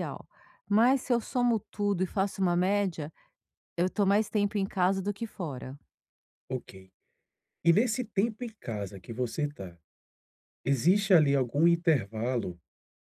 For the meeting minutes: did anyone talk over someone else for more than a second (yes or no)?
no